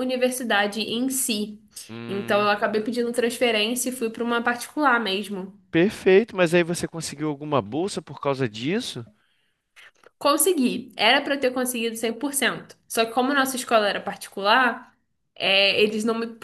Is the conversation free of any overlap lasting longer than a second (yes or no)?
yes